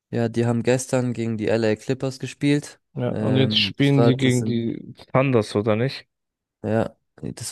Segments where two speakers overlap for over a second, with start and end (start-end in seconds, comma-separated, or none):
2.9-4.7